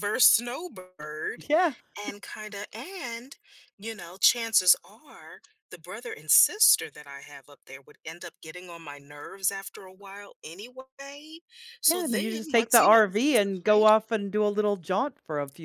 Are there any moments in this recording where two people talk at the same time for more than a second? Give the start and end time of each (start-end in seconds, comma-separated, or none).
11.8-13.9